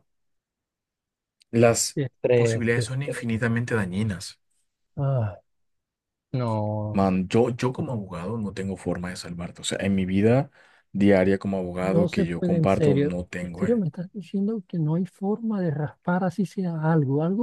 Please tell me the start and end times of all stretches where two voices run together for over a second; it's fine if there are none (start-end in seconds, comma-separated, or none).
1.9-3.3, 11.8-13.8